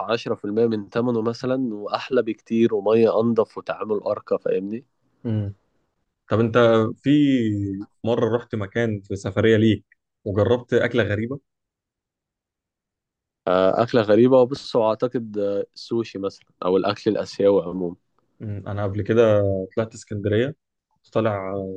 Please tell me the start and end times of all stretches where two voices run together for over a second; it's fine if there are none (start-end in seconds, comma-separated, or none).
none